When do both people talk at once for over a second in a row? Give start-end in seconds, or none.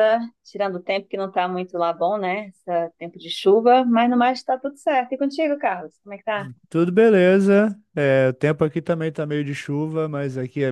none